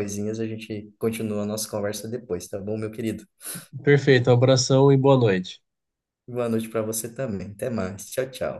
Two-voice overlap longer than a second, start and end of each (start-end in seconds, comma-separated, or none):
none